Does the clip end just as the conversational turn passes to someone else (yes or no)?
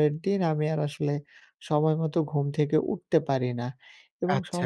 no